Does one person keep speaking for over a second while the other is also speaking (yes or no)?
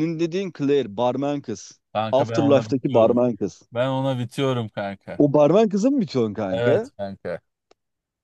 yes